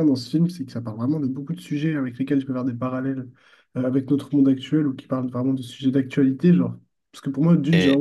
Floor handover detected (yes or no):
no